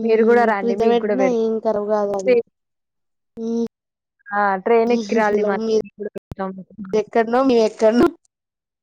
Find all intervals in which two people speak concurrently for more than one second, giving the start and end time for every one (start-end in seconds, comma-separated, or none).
0.6-2.3